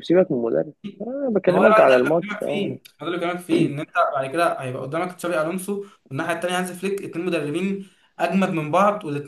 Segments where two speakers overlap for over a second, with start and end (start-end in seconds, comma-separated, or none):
1.5-2.8